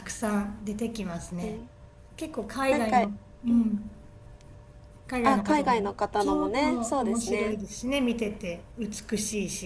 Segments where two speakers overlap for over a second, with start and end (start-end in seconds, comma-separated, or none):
5.2-7.5